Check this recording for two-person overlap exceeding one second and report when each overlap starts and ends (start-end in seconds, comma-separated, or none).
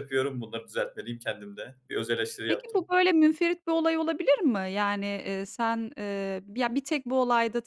none